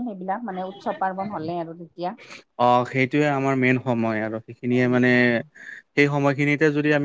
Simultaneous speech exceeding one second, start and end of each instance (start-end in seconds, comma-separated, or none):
none